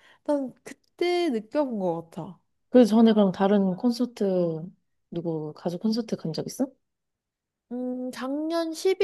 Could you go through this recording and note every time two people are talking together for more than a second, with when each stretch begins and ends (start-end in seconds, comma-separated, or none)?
none